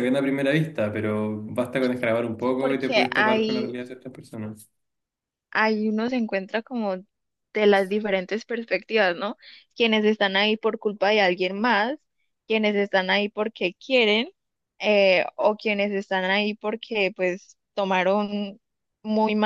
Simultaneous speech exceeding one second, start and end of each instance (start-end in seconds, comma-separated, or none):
2.4-3.8